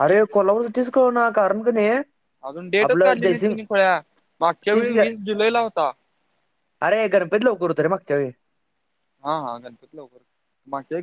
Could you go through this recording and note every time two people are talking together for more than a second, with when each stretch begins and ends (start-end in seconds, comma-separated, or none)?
none